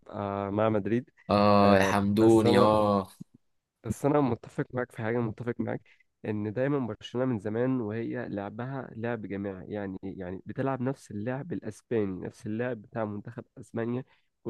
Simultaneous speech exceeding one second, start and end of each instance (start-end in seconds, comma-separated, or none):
1.6-2.9